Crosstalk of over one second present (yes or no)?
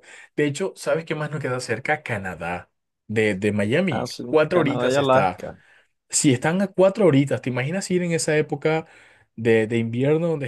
yes